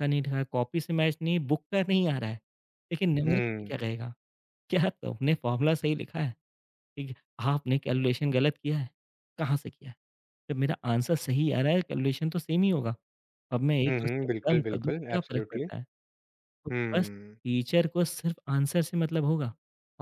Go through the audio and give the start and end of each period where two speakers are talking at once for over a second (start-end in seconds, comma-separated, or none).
13.9-15.7